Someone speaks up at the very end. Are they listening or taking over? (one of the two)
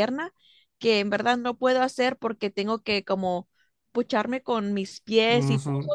taking over